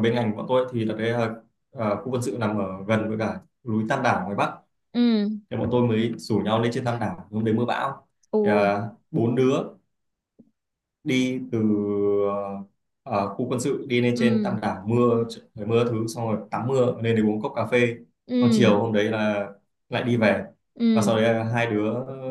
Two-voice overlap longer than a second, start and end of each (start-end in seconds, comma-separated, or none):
none